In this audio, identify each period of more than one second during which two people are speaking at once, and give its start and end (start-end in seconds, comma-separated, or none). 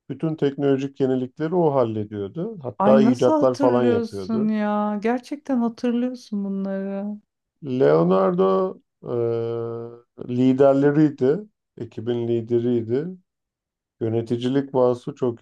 2.8-4.5